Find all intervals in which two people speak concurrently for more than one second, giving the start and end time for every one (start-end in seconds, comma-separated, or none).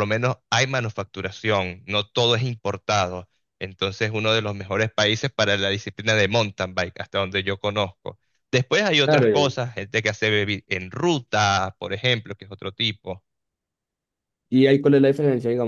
none